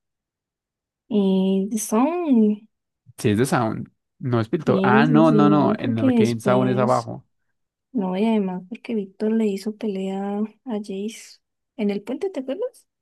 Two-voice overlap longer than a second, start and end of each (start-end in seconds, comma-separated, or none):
4.6-7.1